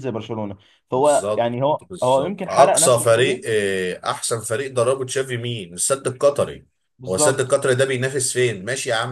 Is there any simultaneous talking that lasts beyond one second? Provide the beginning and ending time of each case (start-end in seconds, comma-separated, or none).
0.9-3.4